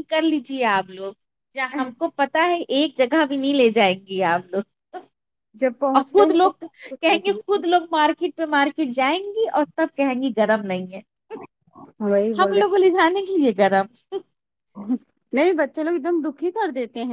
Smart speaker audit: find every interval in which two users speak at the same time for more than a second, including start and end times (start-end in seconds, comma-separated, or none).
6.0-7.4